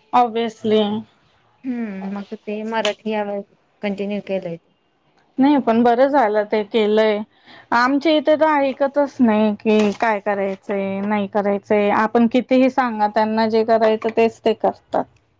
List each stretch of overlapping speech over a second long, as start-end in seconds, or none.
none